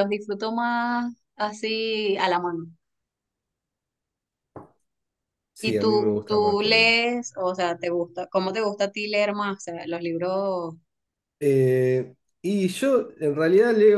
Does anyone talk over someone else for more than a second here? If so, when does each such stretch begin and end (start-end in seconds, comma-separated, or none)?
5.6-6.9